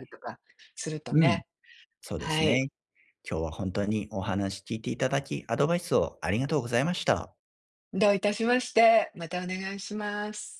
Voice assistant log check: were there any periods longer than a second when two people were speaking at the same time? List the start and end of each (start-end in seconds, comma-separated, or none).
none